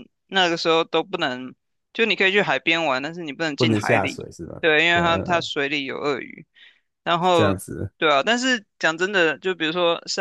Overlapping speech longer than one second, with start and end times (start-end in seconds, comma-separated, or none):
3.6-5.5